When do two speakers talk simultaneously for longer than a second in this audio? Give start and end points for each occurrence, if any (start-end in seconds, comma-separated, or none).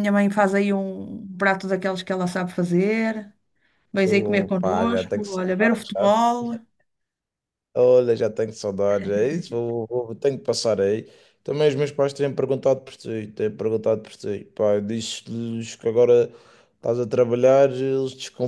4.0-6.1